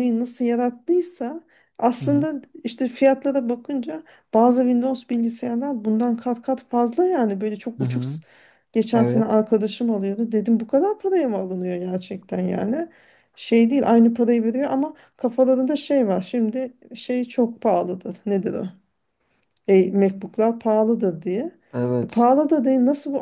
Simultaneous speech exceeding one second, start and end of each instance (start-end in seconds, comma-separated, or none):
none